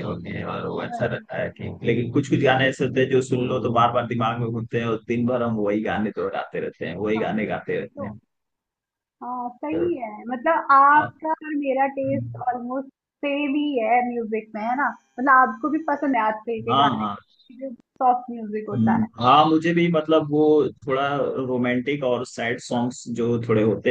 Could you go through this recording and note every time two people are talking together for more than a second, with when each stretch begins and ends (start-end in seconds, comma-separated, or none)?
none